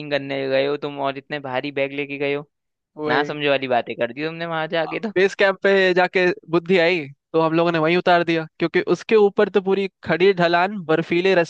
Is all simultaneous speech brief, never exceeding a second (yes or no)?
yes